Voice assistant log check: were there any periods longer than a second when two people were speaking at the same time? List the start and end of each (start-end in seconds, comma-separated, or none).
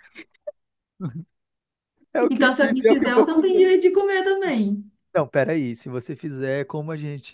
2.3-3.7